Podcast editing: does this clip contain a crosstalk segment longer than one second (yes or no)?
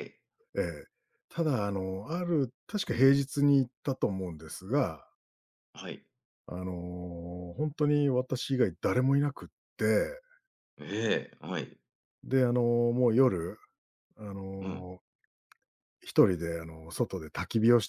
no